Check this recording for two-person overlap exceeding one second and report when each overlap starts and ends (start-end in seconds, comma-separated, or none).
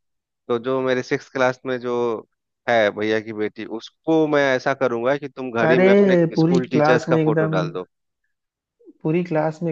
5.7-7.5